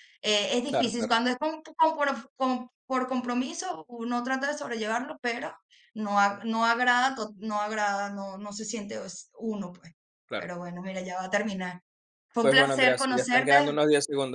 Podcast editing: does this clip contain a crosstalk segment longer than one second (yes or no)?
yes